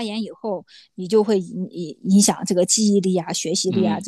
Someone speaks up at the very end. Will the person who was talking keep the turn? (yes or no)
no